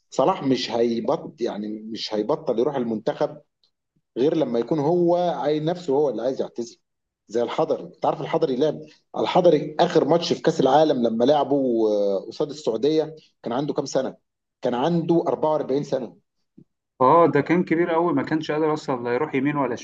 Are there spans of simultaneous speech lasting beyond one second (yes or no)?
no